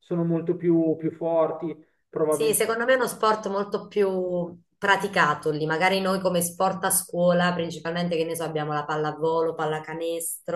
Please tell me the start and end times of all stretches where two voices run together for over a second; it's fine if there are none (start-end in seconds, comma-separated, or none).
none